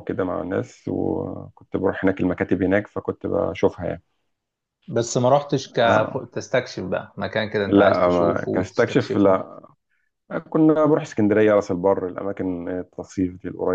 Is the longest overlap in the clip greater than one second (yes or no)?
yes